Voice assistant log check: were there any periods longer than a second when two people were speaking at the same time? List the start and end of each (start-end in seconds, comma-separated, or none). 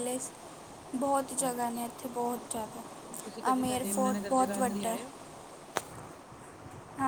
3.2-5.0